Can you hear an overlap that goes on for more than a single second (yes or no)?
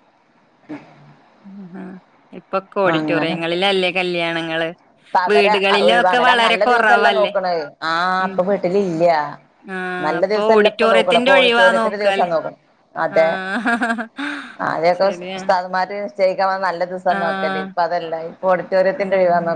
yes